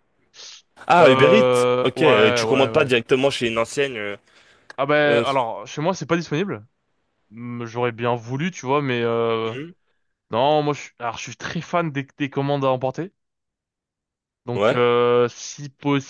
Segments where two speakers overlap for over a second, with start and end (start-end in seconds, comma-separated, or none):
1.0-2.9